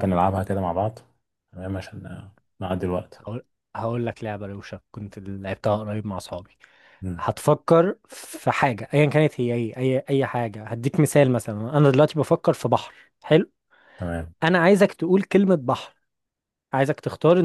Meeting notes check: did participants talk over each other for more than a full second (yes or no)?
no